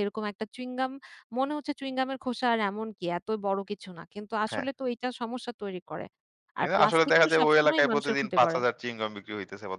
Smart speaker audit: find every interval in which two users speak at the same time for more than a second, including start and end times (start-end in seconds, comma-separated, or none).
6.6-8.6